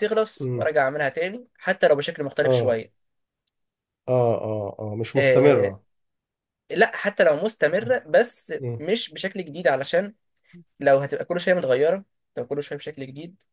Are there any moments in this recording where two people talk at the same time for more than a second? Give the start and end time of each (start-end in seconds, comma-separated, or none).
none